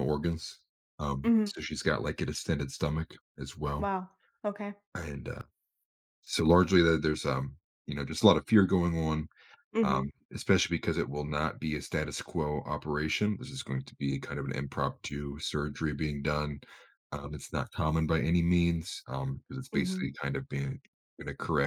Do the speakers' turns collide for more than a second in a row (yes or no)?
no